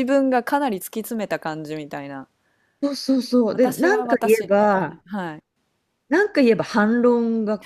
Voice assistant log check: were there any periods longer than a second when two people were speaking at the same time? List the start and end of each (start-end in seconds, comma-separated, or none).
3.5-5.0